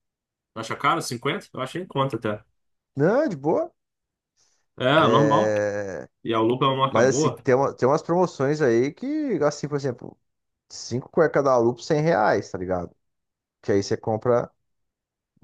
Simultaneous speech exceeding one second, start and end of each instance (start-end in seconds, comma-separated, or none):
none